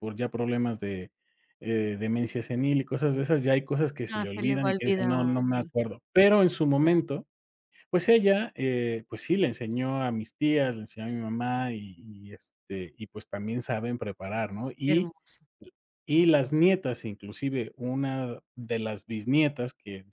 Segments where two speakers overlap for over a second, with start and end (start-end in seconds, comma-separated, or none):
4.1-5.4